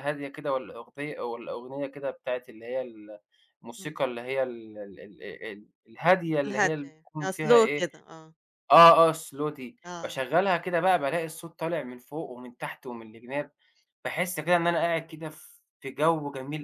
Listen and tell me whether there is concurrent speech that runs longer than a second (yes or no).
yes